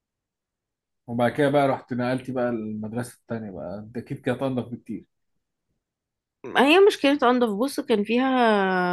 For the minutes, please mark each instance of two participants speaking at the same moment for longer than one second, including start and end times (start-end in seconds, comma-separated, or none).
none